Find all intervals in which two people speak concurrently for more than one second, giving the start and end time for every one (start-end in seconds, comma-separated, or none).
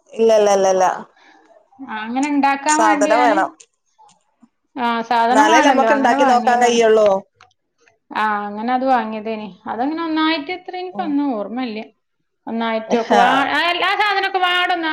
5.3-6.8